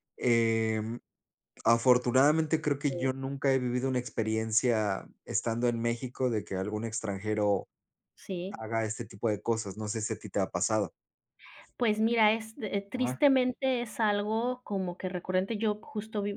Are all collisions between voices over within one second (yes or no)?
yes